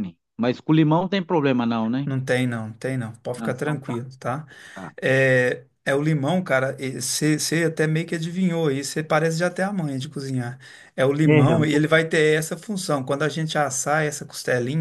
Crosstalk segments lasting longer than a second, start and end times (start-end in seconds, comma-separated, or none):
none